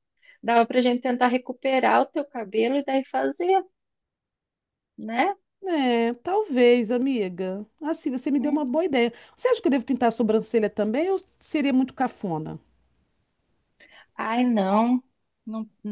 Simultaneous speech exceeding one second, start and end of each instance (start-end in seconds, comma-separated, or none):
none